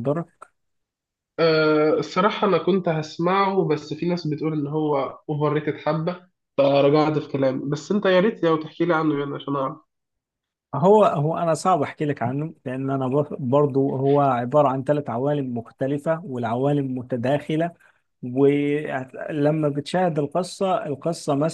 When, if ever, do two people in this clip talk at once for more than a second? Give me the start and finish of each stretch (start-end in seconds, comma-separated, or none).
none